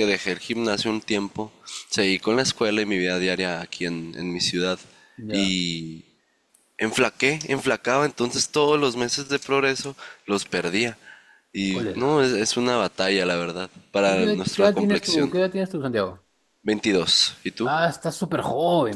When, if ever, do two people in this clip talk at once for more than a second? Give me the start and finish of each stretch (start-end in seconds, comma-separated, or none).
14.0-15.3